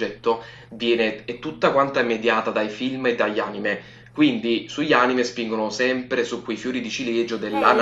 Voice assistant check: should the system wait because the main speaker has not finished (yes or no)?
no